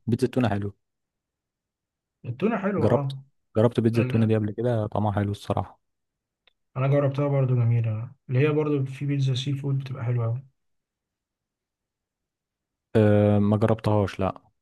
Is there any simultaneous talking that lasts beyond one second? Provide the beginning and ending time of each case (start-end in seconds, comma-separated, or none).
none